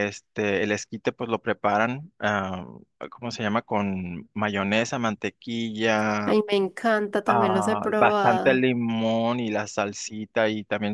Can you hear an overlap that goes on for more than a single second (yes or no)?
yes